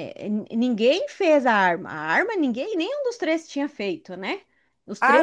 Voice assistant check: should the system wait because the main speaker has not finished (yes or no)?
no